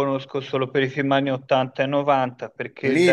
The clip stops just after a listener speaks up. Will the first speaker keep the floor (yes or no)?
no